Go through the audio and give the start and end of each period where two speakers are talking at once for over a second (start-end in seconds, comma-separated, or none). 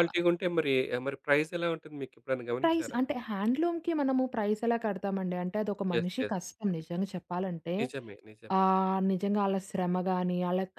none